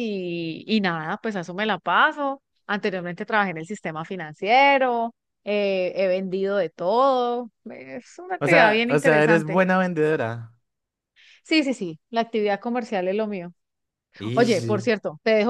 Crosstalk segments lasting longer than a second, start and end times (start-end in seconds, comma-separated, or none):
8.4-9.6